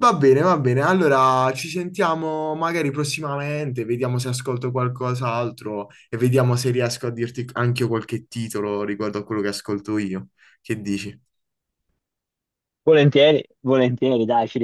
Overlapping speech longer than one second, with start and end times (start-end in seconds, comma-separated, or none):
none